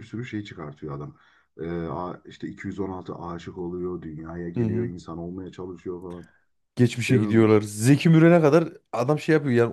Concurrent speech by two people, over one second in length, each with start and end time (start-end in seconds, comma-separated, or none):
none